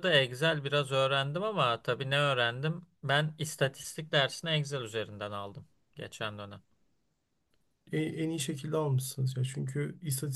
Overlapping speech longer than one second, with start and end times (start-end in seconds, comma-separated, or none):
none